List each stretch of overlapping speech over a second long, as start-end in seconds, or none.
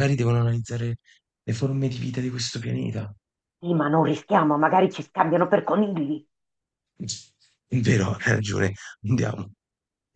none